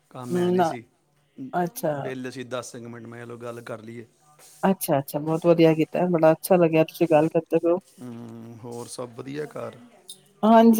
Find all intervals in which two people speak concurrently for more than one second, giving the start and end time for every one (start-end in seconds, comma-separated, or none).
none